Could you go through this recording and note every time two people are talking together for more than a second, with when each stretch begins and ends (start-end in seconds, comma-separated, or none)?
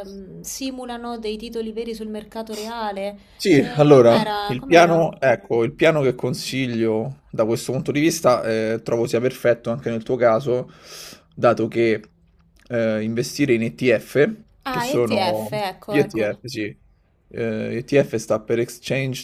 3.6-5.0, 14.7-16.4